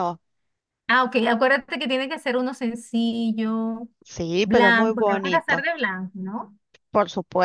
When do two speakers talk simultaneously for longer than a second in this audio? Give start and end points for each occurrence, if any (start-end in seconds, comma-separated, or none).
4.4-5.6